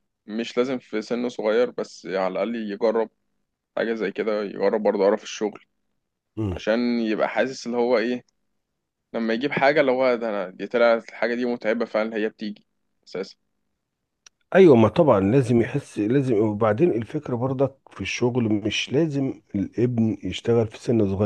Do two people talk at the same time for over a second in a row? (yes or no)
no